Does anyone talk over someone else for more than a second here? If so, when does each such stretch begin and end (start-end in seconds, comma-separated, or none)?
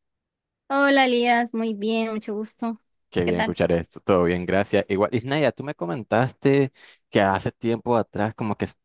none